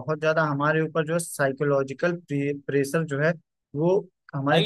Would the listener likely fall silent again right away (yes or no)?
no